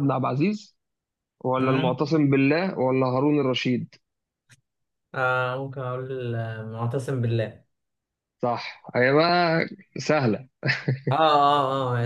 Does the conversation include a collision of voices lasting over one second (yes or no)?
no